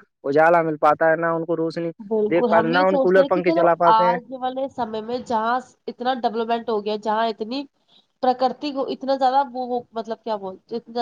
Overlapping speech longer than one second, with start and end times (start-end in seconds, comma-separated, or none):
2.3-4.2